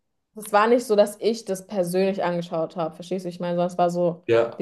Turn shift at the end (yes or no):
no